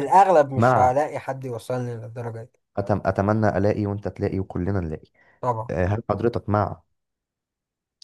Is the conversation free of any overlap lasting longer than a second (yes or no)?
yes